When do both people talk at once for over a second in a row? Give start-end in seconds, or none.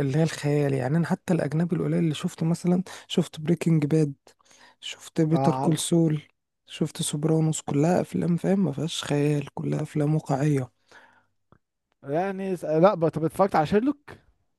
none